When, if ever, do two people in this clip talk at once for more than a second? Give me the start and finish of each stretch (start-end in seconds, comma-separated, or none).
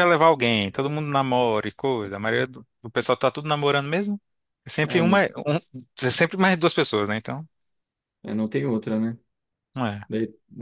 none